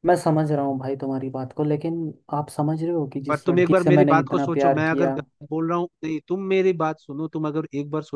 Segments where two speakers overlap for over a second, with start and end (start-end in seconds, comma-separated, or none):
3.3-5.2